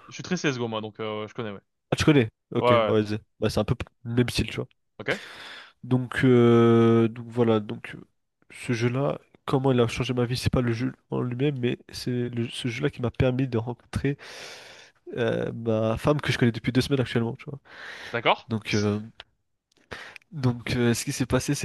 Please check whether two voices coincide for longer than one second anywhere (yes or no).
no